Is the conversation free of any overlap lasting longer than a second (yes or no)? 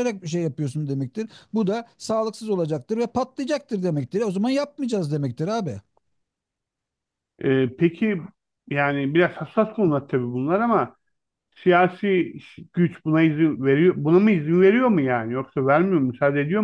yes